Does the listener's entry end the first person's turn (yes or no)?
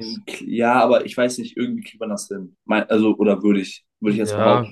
yes